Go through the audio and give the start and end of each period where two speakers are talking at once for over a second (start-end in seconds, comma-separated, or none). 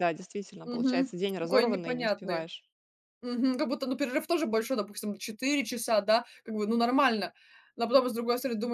0.6-2.5